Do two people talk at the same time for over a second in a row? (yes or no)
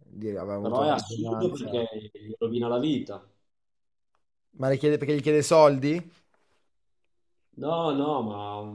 yes